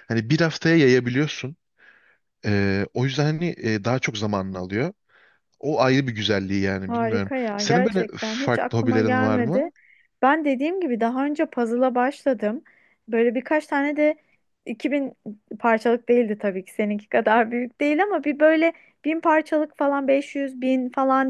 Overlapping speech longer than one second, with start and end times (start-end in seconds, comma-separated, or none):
6.9-9.7